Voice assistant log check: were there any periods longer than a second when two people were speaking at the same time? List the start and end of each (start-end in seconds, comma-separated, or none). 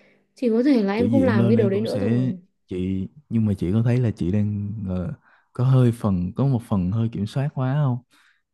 1.0-2.4